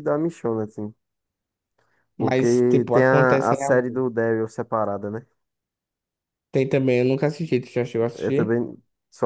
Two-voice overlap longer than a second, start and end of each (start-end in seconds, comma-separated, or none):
2.2-3.6